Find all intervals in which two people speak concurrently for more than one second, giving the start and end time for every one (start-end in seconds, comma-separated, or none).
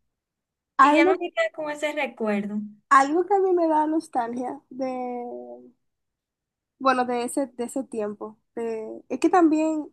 none